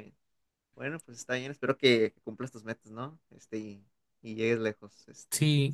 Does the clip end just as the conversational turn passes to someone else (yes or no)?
yes